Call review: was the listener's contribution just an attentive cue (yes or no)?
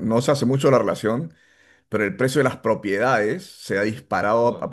yes